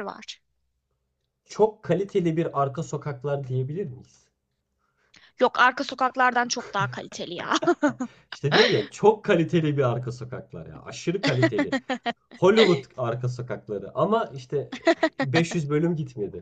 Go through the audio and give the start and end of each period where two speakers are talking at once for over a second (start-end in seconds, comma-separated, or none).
none